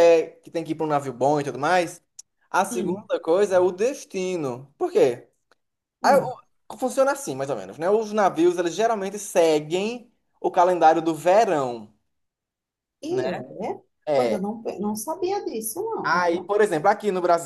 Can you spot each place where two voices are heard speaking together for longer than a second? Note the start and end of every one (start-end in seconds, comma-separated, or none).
none